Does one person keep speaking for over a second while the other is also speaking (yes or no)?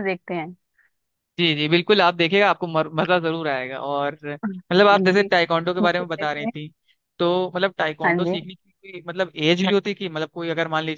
yes